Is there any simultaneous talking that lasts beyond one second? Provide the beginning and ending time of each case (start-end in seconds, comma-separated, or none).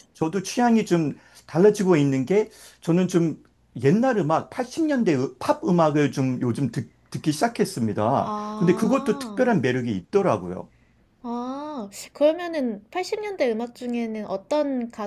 8.2-9.4